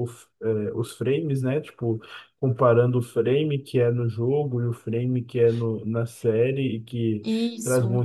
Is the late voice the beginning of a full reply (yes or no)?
no